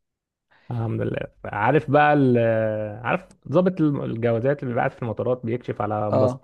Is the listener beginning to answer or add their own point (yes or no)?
no